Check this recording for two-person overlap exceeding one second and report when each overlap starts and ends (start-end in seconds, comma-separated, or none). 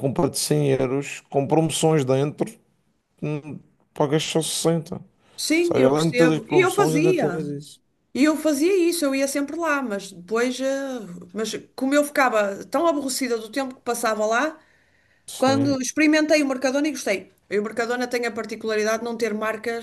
5.6-7.4